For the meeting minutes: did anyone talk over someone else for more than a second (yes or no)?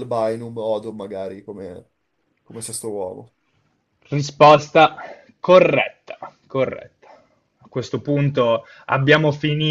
no